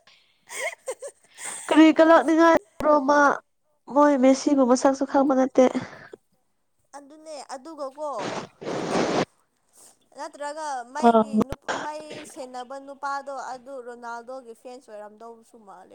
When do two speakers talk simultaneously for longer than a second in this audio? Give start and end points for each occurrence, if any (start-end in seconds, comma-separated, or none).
none